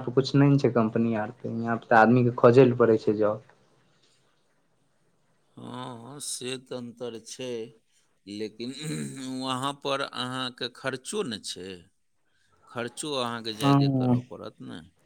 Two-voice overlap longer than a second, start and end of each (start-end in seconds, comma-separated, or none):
none